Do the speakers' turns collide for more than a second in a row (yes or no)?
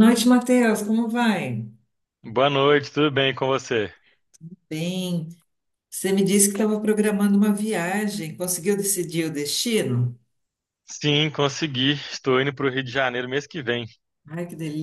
no